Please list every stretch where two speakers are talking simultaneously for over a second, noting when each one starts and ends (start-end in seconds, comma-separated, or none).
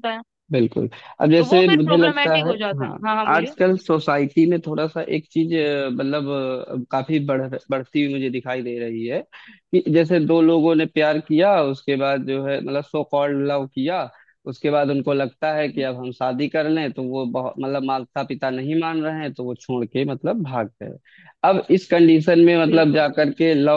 1.4-3.5